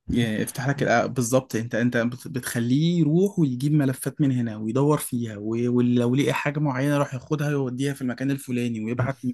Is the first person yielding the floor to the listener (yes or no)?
no